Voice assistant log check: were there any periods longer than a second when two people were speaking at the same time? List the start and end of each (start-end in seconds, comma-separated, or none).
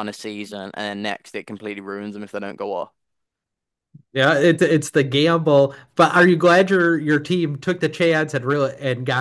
none